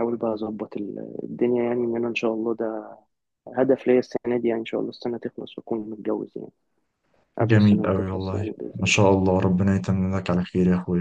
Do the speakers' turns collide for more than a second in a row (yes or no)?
yes